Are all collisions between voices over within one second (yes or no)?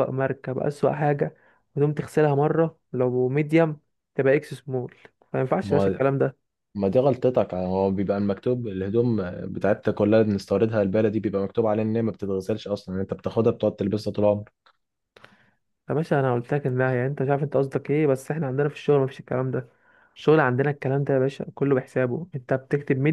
yes